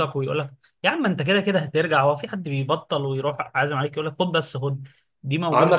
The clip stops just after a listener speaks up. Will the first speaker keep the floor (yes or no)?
yes